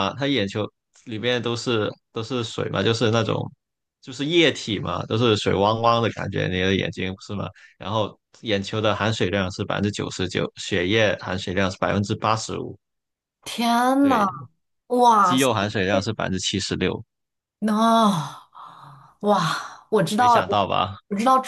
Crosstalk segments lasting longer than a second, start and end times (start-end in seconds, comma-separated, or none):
none